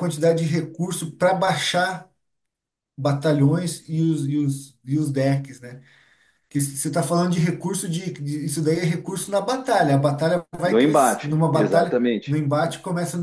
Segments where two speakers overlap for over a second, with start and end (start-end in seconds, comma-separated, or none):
10.6-12.4